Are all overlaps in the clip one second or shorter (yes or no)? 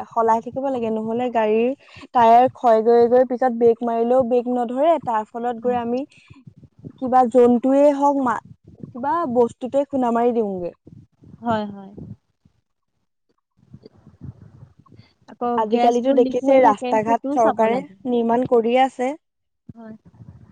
no